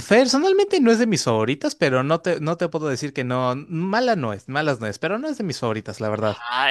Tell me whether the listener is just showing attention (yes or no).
no